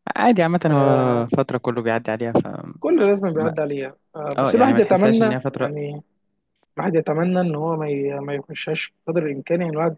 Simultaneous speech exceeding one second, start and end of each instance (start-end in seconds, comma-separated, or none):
4.4-5.8